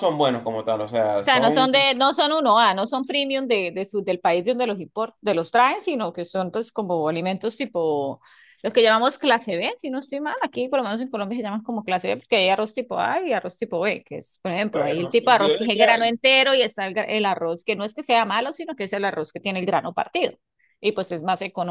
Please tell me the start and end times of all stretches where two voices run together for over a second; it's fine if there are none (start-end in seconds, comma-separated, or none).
14.7-16.0